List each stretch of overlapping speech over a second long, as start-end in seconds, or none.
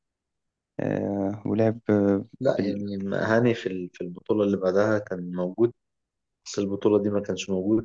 none